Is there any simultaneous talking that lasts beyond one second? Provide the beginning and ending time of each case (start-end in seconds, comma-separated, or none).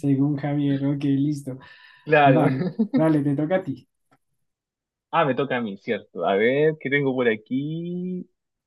none